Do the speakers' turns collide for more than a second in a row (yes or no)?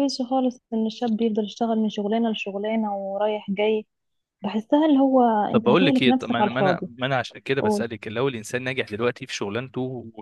yes